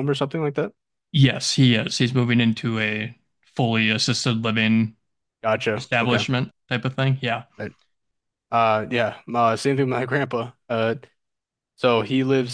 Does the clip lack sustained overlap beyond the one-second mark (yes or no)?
yes